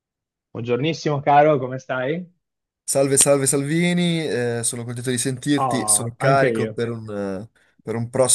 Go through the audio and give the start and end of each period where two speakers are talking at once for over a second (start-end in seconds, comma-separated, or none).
5.6-6.8